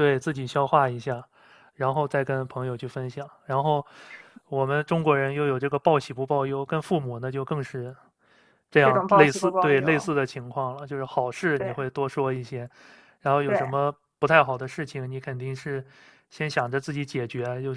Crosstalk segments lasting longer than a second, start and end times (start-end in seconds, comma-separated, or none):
8.8-10.1